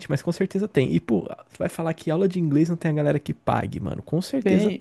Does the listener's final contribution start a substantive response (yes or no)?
yes